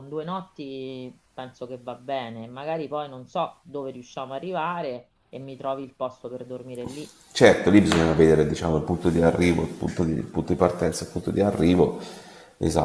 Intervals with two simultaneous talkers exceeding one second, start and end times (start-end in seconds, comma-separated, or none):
none